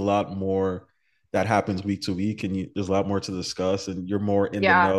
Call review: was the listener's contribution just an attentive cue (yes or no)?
yes